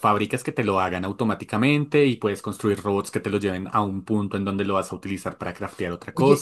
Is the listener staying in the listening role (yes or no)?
no